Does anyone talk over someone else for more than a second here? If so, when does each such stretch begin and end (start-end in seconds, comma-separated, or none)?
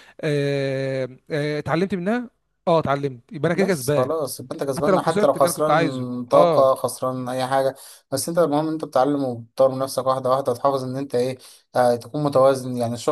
4.8-6.7